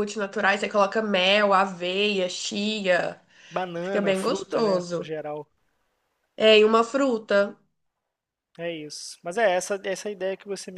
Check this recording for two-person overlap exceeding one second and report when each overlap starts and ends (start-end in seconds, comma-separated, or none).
3.8-5.1